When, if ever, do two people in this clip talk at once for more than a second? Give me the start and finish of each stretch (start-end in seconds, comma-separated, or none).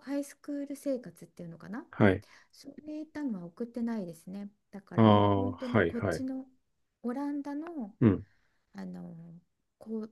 5.0-6.2